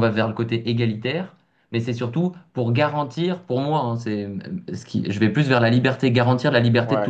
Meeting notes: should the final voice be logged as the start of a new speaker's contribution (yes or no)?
no